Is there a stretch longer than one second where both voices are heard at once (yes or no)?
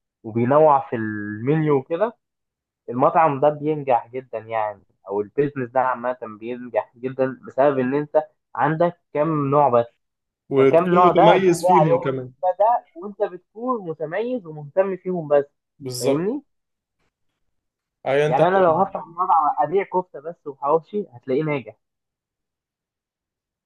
yes